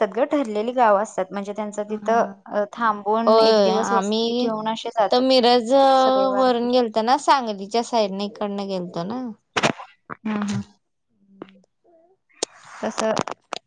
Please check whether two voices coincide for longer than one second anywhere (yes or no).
yes